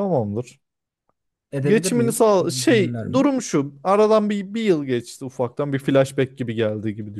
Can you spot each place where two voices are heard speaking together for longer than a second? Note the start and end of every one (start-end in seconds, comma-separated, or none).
1.6-3.3